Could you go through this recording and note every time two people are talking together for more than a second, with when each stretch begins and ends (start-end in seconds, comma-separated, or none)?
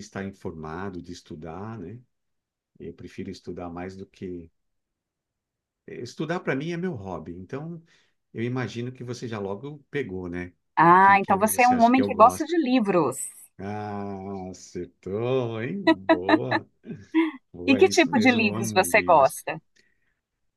10.8-12.6, 17.7-19.4